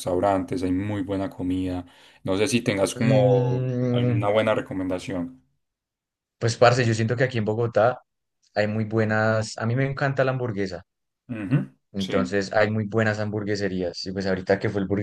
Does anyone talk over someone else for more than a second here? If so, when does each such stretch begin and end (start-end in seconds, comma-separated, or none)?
3.0-4.3